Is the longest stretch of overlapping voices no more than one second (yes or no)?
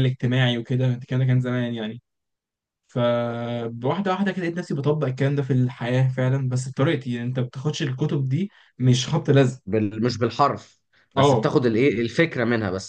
yes